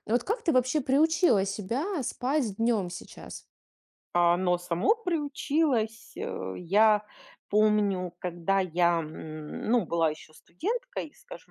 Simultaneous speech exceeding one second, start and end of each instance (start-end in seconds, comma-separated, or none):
none